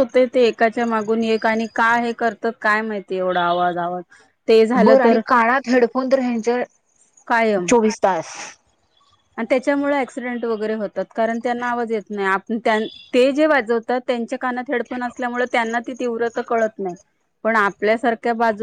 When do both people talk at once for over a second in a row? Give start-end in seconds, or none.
none